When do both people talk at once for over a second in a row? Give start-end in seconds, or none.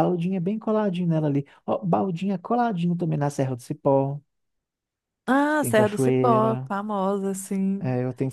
5.5-6.7